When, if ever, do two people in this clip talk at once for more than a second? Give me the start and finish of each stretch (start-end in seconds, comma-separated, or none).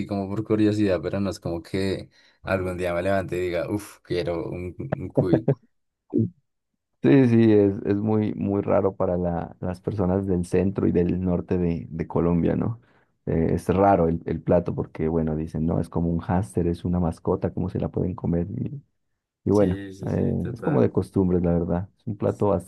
19.5-20.9